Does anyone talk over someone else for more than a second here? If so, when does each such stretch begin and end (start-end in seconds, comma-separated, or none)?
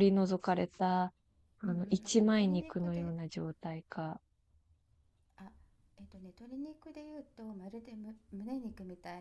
1.6-3.1